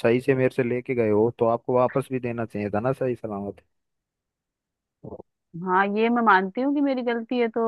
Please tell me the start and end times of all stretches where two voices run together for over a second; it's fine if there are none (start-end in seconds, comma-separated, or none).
none